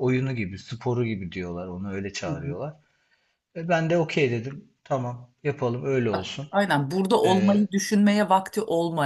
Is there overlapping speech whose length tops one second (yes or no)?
no